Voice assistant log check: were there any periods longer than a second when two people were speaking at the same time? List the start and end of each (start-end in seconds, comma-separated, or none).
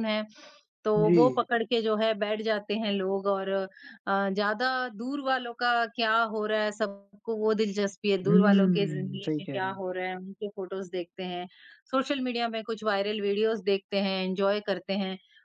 8.3-9.8